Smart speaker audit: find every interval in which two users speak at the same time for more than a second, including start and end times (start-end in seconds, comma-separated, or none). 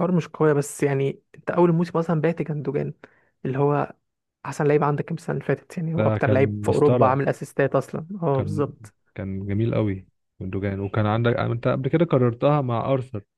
6.0-7.2